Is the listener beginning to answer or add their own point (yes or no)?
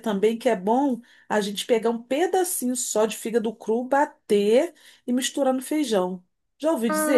yes